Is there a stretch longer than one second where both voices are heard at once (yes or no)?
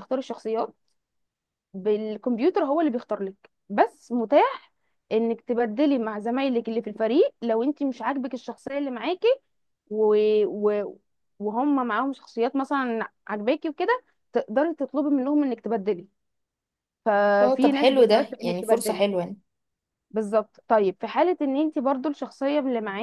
yes